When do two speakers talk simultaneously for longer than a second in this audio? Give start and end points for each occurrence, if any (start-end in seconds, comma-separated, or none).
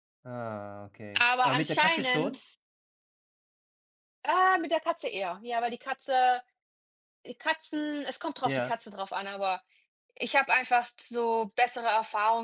1.2-2.4